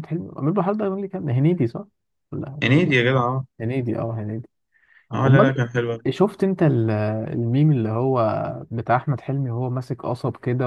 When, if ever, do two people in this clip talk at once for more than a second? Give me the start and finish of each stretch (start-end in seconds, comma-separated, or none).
none